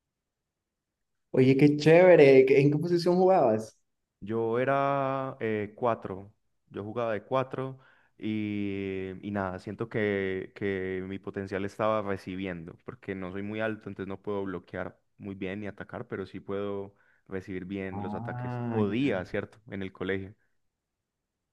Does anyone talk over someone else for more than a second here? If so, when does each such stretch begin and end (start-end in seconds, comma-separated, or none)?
17.9-19.2